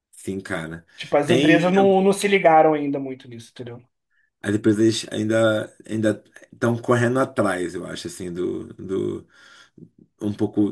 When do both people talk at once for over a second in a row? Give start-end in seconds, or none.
none